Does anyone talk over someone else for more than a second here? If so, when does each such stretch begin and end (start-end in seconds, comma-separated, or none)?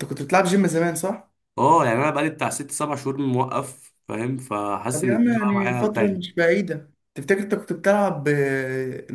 4.9-6.4